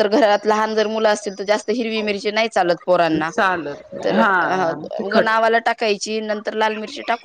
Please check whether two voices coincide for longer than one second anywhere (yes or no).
no